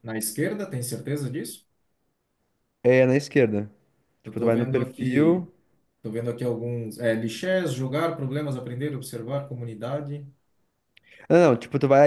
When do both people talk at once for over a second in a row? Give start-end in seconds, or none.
4.2-5.5